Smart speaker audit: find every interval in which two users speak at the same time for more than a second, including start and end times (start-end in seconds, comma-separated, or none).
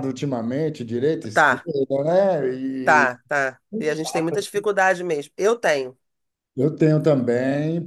none